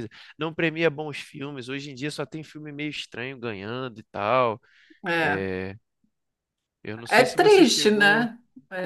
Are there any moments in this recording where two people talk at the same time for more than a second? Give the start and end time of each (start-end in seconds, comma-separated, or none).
7.1-8.3